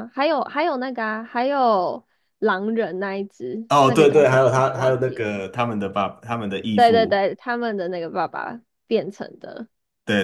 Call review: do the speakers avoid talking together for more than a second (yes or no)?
no